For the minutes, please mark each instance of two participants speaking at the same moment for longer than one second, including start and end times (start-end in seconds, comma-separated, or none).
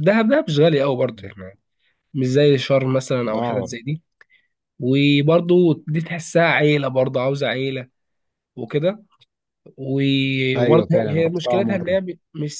10.6-12.0